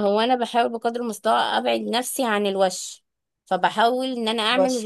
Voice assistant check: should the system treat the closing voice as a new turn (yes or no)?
no